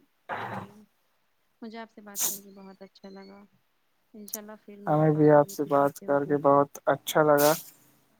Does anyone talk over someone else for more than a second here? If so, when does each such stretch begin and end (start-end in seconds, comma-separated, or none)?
4.9-6.4